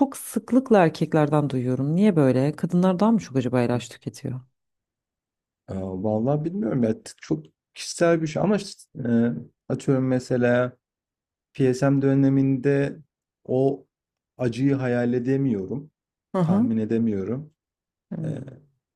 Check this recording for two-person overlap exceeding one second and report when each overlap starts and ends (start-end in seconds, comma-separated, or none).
none